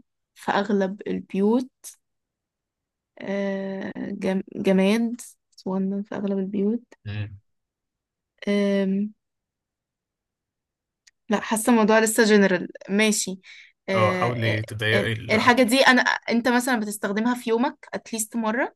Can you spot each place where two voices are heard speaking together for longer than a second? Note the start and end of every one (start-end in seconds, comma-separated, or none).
13.9-15.5